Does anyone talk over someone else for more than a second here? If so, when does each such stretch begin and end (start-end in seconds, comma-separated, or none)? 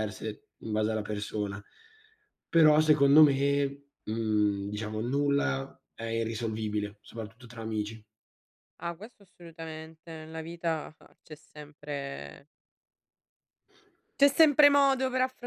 none